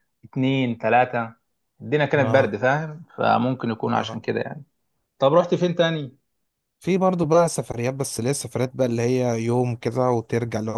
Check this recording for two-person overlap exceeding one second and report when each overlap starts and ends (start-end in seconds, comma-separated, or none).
none